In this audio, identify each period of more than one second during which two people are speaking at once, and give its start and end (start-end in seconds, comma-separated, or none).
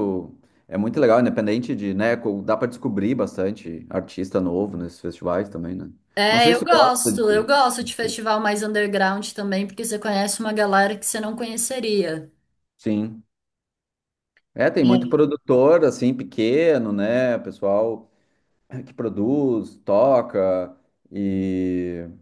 6.3-7.5